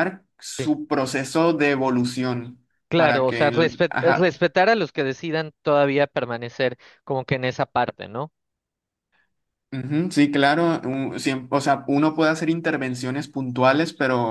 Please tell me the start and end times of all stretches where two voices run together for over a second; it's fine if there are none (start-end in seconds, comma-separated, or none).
2.9-4.4